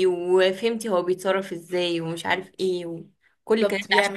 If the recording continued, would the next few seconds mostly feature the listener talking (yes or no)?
no